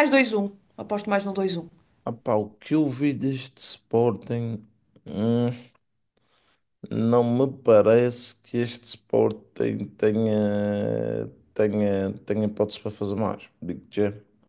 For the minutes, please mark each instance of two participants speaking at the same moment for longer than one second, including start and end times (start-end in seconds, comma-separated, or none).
none